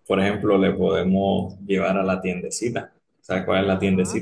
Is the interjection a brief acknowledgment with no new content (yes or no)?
yes